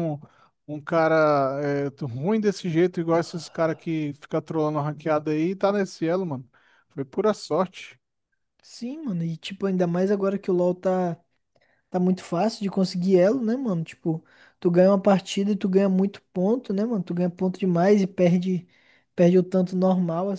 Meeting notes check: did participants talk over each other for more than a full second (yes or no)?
no